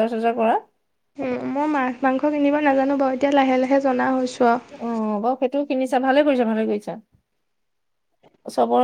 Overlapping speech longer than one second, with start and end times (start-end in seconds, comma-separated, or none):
none